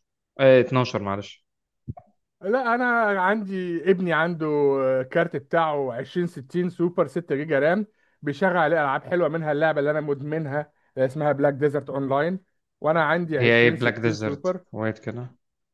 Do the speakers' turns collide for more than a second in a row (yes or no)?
yes